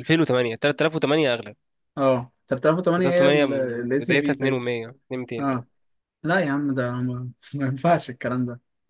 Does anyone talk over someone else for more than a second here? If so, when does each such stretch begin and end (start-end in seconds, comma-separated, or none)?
3.0-4.6